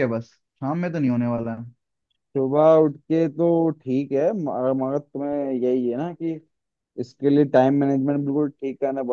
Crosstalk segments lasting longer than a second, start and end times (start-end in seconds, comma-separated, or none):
none